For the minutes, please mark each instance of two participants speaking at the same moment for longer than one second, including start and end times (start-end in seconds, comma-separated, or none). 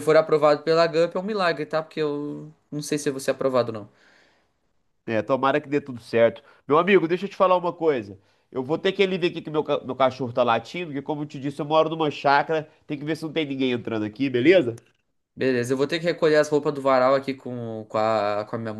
none